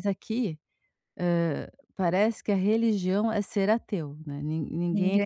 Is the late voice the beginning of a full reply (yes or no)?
no